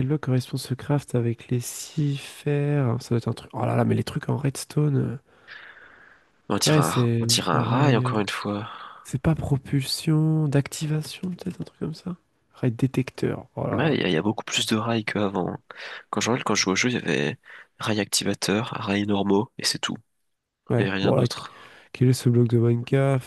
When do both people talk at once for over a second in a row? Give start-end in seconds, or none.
6.7-8.1